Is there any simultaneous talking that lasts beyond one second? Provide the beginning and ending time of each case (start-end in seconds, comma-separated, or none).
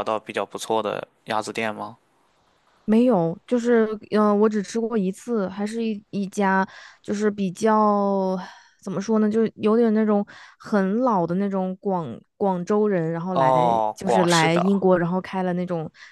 13.3-14.6